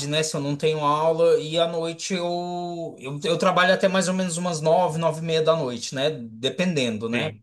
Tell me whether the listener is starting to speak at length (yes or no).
no